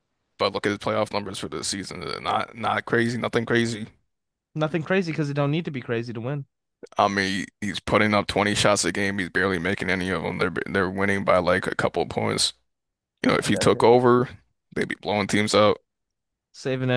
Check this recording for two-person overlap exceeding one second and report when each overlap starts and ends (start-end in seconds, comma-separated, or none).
none